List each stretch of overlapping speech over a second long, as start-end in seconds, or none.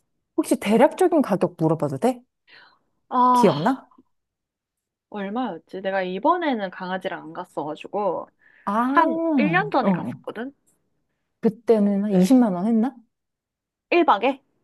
8.9-10.2